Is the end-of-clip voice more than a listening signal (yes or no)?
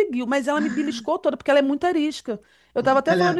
no